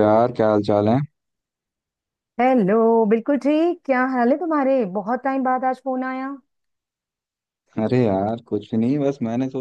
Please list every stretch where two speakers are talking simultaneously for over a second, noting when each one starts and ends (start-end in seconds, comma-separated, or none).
none